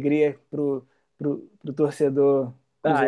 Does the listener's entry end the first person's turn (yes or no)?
yes